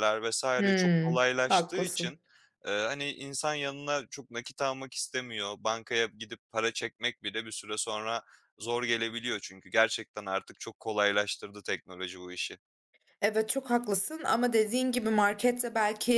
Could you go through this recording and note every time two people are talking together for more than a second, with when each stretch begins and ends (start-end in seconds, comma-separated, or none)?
0.6-2.1